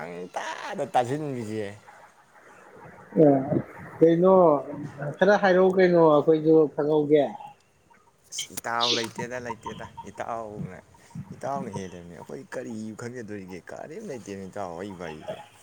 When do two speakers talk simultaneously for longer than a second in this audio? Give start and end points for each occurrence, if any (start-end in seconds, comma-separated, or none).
none